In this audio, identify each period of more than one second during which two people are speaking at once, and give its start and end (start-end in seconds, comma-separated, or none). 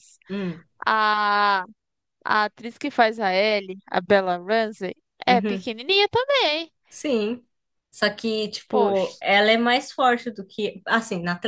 none